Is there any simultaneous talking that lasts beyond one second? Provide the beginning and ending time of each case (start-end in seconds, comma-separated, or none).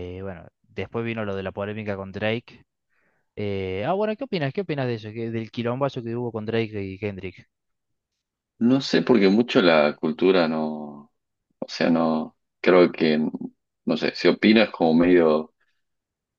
none